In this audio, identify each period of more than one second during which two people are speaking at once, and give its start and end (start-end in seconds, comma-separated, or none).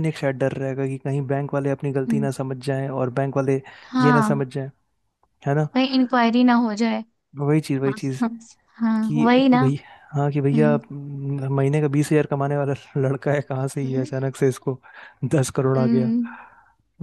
none